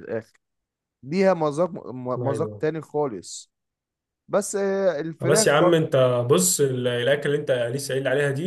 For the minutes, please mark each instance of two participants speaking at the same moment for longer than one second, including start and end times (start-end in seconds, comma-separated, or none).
none